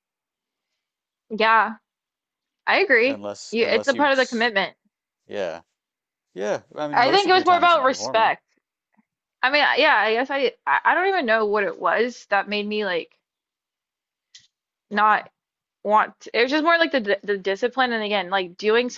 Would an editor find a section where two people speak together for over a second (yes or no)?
yes